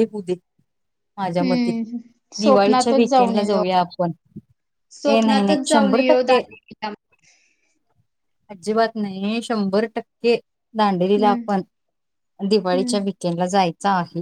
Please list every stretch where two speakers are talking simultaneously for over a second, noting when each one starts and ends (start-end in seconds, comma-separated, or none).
2.4-3.6, 5.1-6.4